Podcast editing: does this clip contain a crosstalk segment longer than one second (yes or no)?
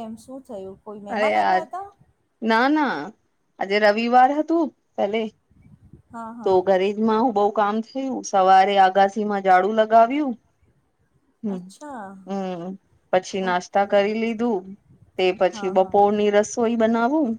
no